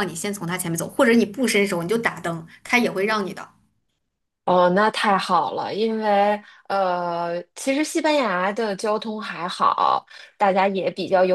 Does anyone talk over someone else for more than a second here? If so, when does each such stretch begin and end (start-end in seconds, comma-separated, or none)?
none